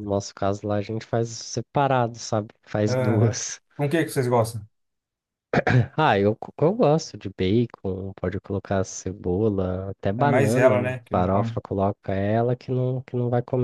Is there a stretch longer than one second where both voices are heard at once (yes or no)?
yes